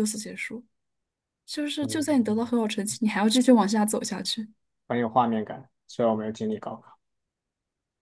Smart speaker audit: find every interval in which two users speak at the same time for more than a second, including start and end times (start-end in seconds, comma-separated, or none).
none